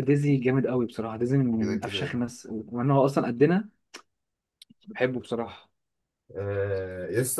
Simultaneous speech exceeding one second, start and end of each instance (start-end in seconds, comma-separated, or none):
none